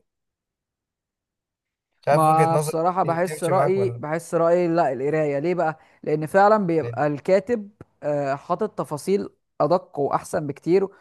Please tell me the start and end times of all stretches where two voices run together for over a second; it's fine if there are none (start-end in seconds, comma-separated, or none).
2.1-4.0